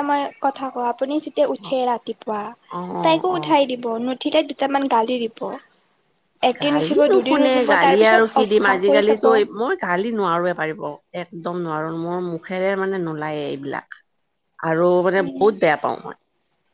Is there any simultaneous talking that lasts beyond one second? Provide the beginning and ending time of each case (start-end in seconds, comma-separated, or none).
6.6-9.2